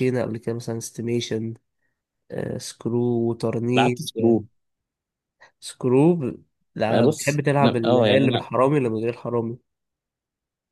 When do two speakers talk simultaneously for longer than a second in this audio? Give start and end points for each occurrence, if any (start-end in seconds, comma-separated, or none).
6.9-8.5